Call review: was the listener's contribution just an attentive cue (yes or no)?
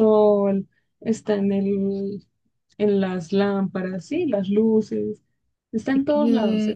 no